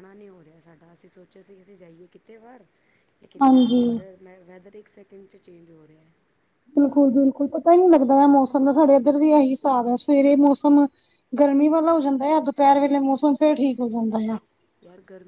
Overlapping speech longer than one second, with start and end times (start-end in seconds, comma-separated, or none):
none